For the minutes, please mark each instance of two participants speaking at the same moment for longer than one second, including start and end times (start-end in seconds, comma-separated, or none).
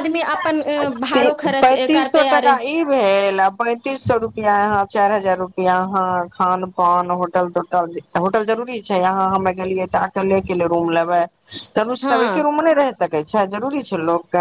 1.1-2.5